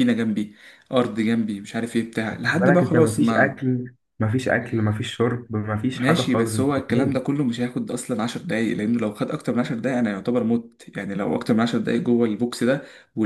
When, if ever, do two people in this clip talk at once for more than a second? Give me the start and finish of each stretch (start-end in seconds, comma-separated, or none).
2.3-3.6, 5.9-7.2